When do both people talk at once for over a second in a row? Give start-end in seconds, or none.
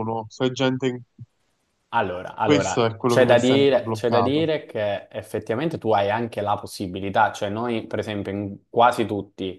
2.4-4.5